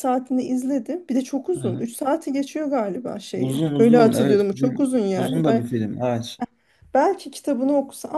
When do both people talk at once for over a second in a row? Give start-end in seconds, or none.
3.4-5.7